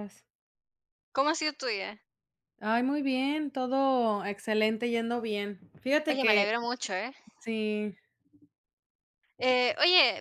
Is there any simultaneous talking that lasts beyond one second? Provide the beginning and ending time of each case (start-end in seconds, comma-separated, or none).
none